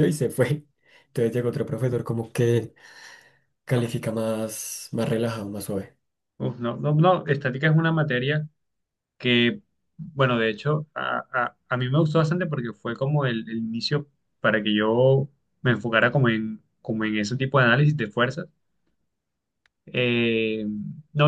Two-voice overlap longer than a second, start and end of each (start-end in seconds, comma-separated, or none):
none